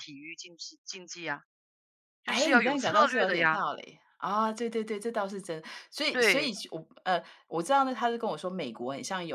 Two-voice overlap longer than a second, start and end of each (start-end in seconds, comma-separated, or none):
2.3-3.6